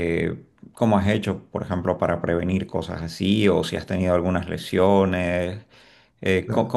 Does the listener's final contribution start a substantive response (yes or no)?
no